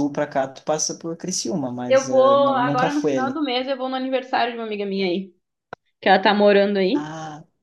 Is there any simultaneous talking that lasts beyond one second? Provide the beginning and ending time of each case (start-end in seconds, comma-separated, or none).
1.9-3.4